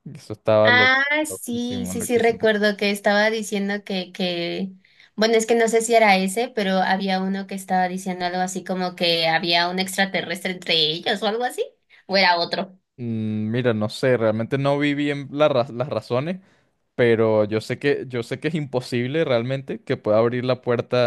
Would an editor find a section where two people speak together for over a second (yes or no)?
yes